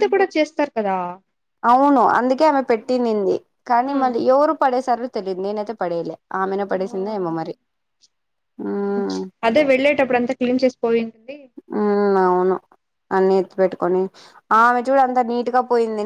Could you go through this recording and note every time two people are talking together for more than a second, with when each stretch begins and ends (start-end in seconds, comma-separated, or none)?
none